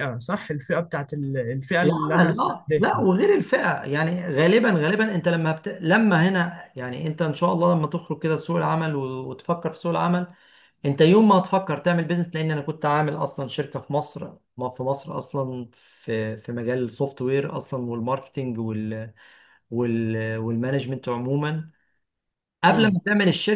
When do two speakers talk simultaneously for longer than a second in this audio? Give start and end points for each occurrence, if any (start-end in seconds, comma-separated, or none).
1.8-3.0